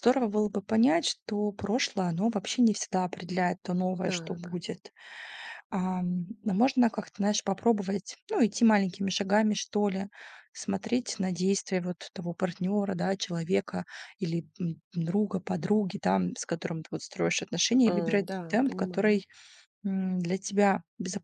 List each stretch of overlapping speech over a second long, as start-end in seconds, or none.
17.9-19.2